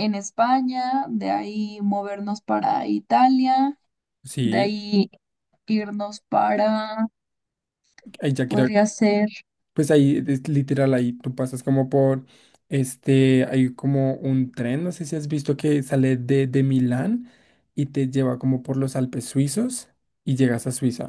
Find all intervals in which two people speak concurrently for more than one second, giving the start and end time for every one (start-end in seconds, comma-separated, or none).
none